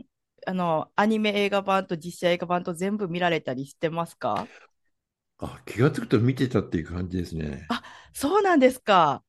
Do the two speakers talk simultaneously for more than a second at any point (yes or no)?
no